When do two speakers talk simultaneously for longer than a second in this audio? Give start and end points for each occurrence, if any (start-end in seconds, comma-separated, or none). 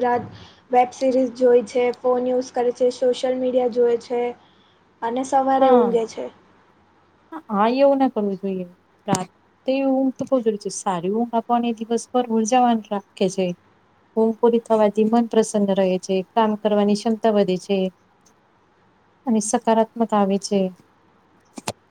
none